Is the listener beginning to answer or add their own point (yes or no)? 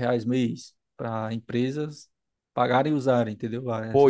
yes